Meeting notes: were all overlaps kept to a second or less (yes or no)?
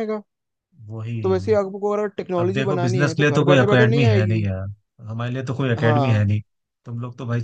no